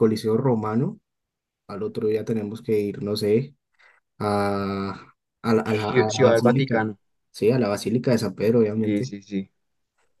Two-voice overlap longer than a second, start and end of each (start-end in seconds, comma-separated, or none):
5.7-6.9